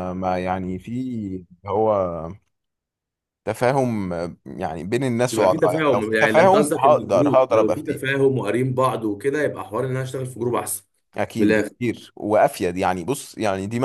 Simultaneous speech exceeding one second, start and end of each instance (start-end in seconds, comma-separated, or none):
5.3-8.0